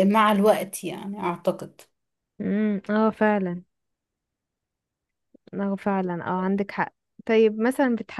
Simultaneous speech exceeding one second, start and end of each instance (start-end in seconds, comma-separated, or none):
none